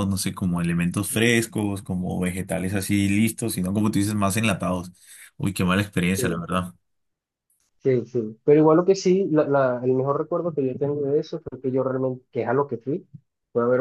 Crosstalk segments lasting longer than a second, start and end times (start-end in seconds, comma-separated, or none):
none